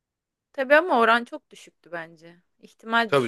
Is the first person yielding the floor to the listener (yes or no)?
yes